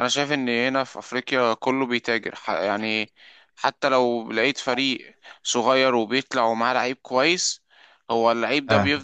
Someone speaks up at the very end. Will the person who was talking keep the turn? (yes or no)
yes